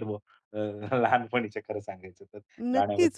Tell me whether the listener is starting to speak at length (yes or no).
yes